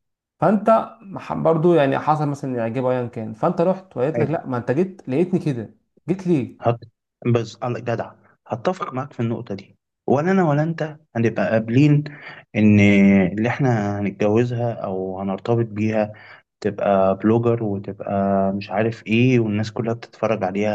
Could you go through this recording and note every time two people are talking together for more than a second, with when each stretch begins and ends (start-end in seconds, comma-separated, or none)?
none